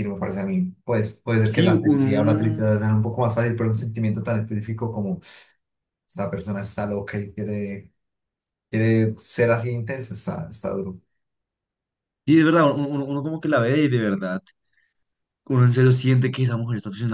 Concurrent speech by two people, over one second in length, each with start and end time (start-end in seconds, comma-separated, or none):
1.4-2.7